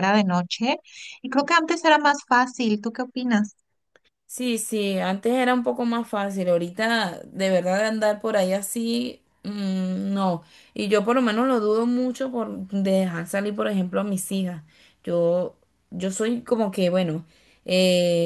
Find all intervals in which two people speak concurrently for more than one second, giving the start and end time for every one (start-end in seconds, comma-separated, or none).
none